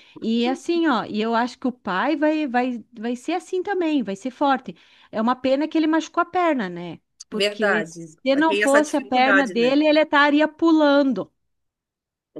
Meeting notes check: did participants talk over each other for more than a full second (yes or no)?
yes